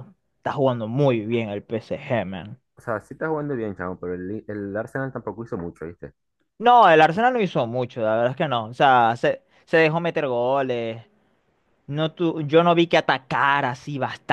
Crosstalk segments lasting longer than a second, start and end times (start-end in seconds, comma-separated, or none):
none